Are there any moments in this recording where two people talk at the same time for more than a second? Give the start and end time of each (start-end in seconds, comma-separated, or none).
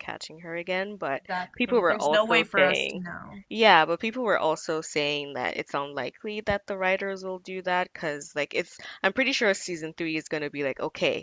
1.2-3.0